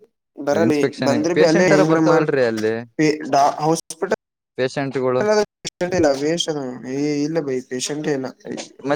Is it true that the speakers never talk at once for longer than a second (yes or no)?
no